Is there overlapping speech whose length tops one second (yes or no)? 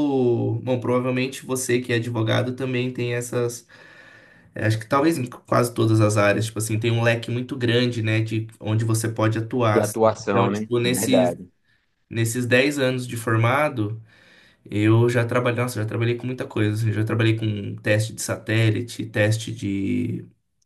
yes